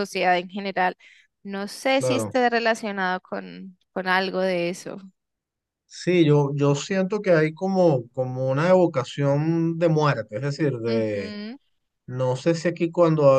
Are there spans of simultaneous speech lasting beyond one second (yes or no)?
no